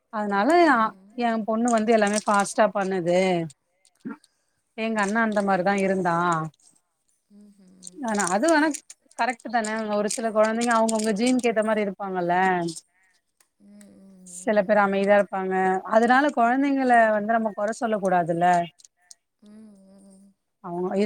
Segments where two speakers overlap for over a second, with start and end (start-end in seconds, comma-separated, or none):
none